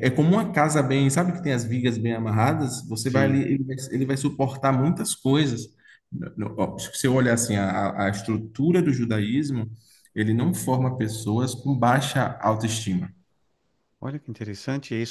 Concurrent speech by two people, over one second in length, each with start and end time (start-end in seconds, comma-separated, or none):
none